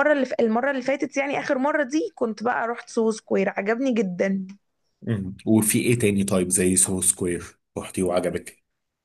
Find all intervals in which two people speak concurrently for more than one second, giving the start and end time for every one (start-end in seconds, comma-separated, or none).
none